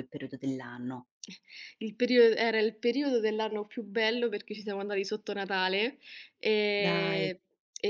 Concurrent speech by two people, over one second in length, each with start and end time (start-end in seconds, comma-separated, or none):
none